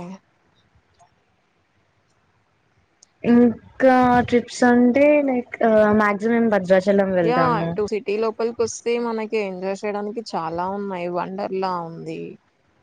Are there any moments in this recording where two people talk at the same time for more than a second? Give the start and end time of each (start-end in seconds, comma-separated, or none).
none